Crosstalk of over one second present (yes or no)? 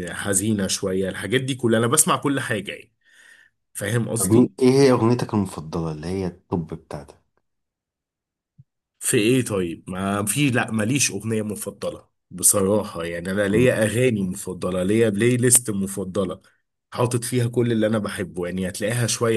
no